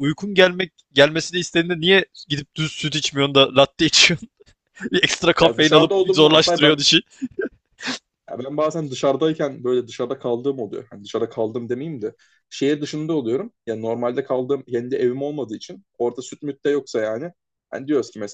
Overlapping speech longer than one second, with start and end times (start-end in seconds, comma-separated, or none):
5.4-6.8